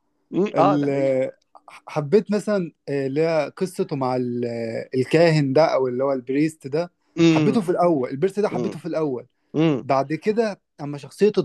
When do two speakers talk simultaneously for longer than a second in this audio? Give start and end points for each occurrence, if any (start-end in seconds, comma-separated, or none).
none